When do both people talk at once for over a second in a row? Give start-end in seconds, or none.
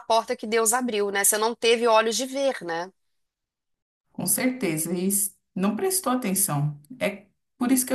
none